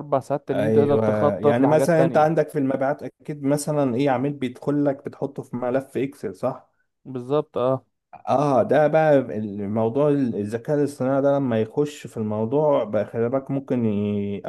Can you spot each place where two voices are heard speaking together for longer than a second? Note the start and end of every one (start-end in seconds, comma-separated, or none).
0.5-2.4